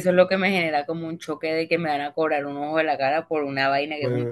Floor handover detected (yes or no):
yes